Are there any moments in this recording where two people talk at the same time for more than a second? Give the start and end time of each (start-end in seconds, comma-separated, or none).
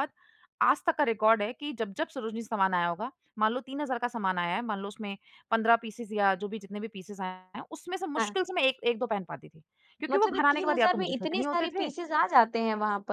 10.1-11.9